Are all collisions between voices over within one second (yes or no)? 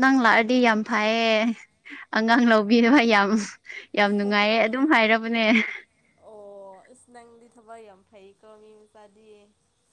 yes